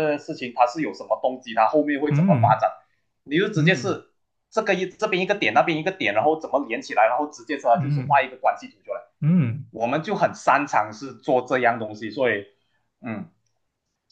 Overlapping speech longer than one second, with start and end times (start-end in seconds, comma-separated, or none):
none